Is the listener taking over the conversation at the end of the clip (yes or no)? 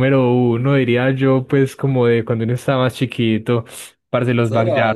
yes